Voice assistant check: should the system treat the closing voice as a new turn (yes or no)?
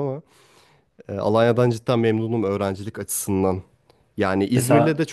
no